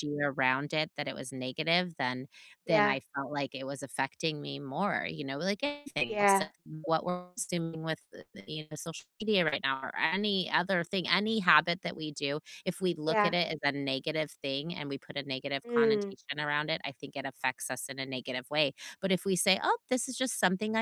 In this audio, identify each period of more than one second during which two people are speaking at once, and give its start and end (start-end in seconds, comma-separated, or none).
none